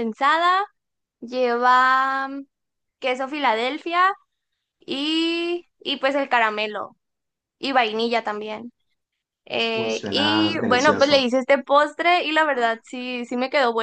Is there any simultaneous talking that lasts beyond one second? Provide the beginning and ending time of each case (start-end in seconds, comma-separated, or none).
9.7-11.3